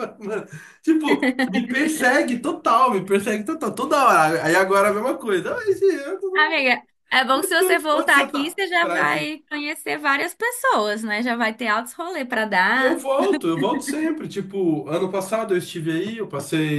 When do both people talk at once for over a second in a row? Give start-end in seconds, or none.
7.3-9.3